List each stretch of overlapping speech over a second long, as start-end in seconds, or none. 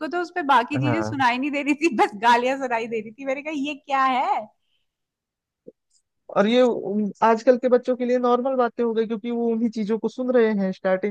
none